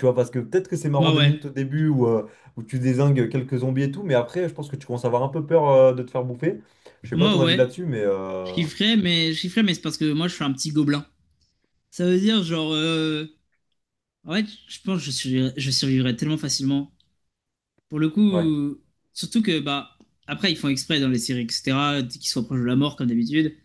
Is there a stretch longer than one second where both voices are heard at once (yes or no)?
no